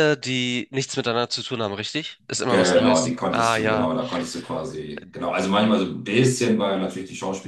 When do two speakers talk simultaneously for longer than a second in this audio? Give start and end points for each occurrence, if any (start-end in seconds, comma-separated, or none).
2.5-3.9